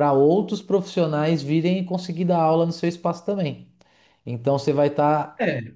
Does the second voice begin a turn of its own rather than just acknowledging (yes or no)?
no